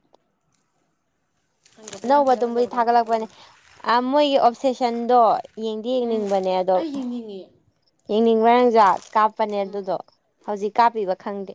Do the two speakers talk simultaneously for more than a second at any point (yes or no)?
yes